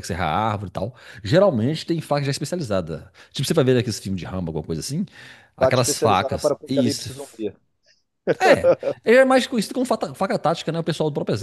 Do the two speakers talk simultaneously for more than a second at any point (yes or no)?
yes